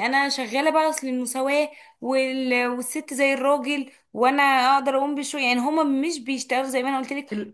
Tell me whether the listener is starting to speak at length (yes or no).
no